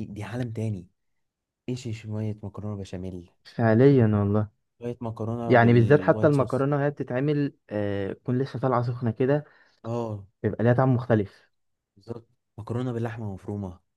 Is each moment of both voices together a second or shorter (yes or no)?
no